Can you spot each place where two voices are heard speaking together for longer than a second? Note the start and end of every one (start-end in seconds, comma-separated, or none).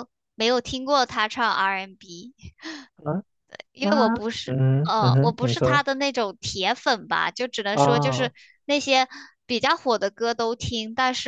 3.8-5.8